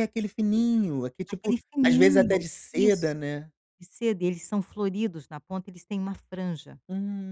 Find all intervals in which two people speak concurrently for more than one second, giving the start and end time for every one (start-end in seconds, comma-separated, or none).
1.3-3.2